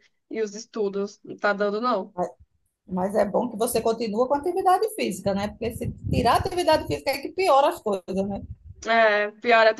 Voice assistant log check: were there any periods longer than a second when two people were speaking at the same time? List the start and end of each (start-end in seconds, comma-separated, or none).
none